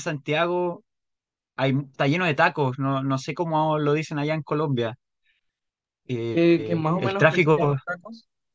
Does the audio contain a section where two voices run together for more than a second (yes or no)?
yes